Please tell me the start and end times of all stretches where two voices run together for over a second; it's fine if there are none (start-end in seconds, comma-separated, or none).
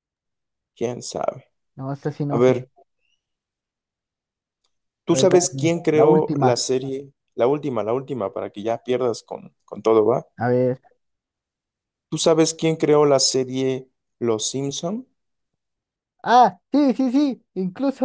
5.1-6.5